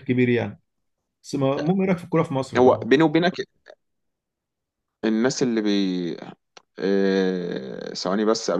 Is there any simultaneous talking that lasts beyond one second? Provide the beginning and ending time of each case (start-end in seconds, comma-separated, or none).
none